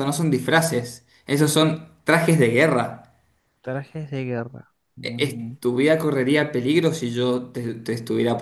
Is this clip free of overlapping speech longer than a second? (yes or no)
yes